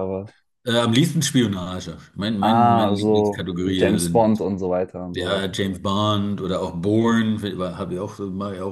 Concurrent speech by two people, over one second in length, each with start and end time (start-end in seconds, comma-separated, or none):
2.4-4.4